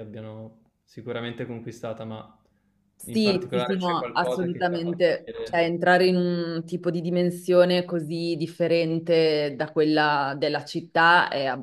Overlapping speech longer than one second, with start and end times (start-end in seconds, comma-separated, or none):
3.1-5.6